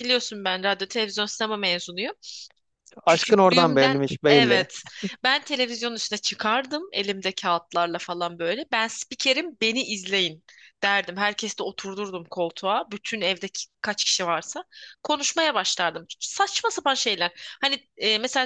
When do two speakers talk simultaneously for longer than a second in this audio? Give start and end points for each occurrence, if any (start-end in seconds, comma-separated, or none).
3.1-4.7